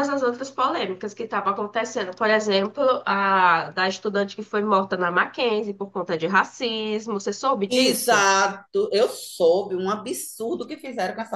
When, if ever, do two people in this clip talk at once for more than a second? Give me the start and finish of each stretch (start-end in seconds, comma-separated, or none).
none